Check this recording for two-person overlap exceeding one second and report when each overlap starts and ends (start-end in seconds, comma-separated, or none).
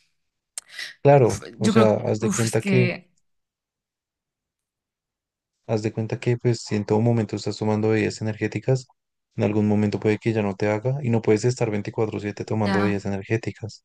1.2-2.9